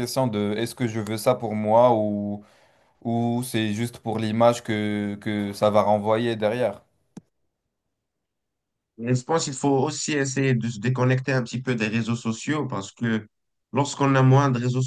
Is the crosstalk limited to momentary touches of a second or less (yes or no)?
yes